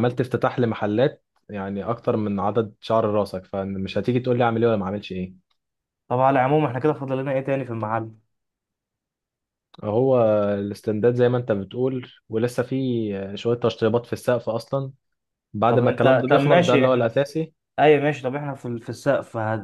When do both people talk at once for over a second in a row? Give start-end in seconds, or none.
15.7-17.2